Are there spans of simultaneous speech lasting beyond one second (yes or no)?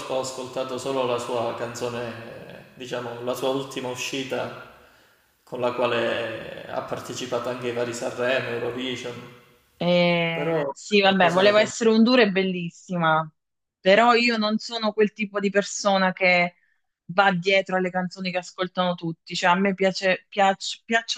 yes